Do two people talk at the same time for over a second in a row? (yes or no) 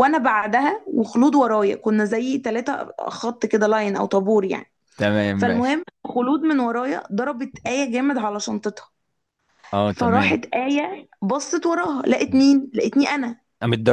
no